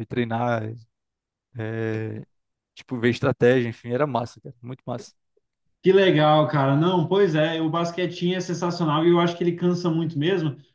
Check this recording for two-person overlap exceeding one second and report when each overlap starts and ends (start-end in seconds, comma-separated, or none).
none